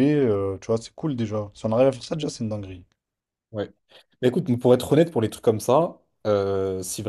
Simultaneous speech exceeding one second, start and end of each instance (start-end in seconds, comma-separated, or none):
none